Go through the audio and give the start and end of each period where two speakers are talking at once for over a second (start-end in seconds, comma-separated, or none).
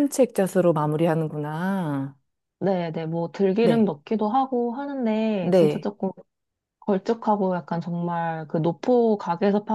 none